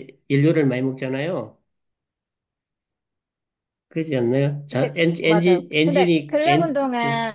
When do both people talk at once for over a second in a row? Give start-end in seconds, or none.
4.7-6.8